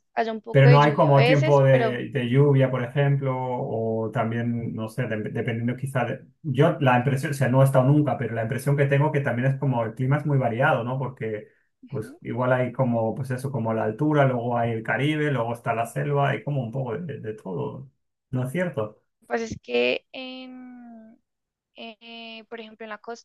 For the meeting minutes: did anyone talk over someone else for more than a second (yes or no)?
yes